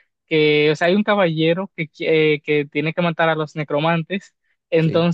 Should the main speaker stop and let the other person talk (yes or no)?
no